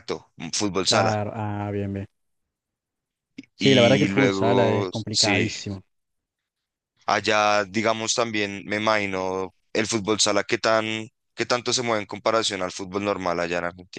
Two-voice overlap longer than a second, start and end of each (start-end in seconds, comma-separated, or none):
3.6-5.5